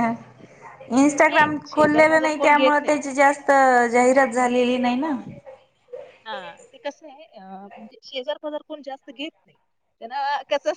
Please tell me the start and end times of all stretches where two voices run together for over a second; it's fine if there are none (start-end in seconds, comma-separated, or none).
1.3-3.0